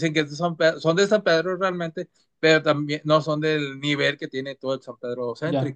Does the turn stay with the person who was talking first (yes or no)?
no